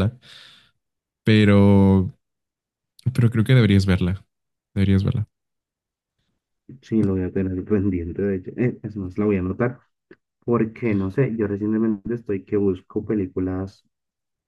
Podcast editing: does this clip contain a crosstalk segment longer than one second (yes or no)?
no